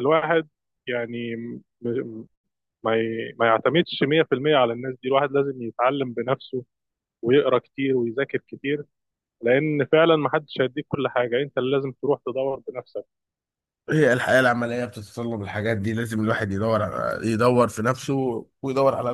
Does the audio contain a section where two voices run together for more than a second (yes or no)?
no